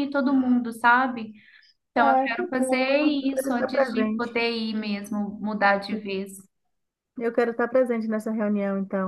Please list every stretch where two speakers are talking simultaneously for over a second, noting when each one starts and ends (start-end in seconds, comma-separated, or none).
2.0-4.4